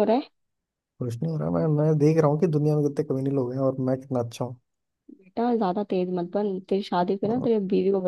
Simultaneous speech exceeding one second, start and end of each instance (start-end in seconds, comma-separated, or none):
none